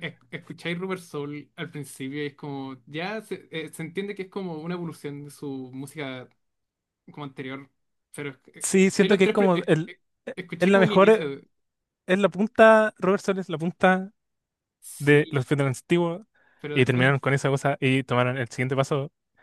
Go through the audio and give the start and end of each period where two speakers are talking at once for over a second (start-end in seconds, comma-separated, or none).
8.6-11.3